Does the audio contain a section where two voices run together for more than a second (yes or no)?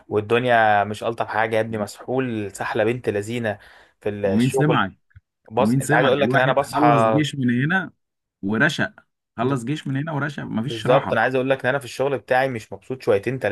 yes